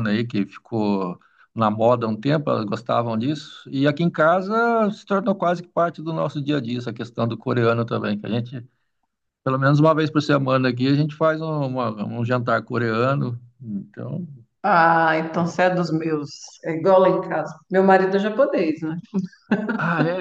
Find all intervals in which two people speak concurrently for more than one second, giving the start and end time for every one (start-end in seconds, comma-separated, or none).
none